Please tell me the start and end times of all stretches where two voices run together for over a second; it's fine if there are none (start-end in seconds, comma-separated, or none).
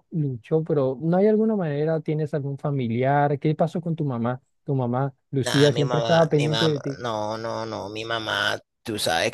5.4-7.0